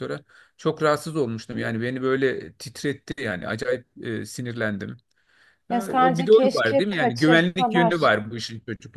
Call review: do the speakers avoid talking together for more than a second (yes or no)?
no